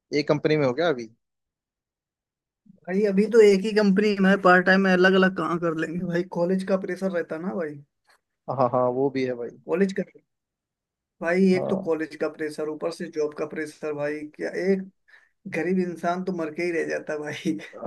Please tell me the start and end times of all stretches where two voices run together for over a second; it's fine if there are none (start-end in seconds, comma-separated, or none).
none